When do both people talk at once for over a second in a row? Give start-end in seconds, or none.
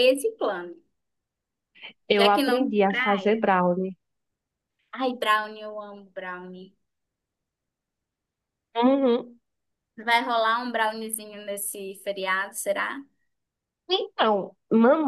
2.1-3.4